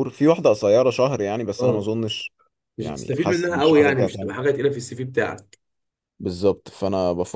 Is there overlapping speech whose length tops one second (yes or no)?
yes